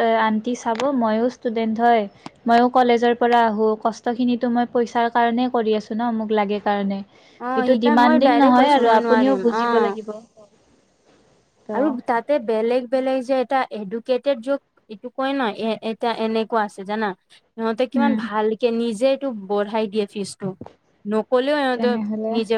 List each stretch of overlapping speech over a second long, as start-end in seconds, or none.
7.4-9.6